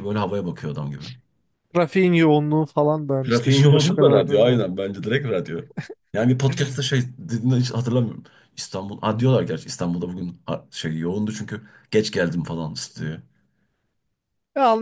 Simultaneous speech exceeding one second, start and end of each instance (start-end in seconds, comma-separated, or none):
3.3-4.6